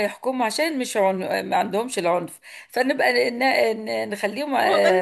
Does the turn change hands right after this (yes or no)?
yes